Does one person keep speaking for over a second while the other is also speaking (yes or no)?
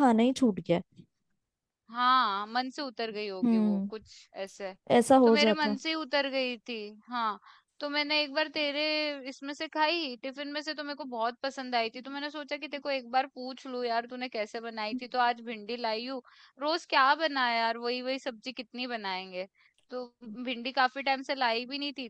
no